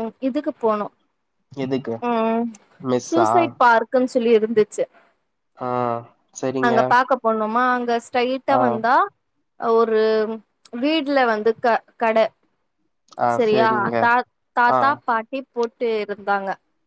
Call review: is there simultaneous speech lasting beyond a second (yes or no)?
no